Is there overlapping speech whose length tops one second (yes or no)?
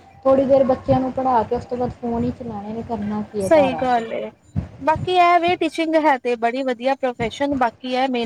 no